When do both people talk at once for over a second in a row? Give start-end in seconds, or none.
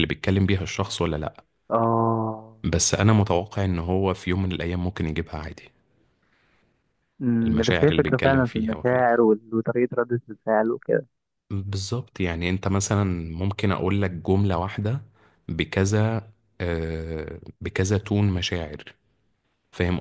7.4-9.2